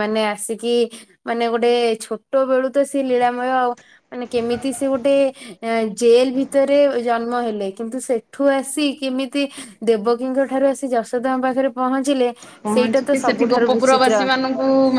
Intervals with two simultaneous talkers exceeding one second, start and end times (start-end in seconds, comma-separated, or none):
12.7-14.2